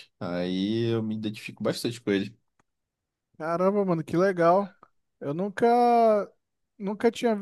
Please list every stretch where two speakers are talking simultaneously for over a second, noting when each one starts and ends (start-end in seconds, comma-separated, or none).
none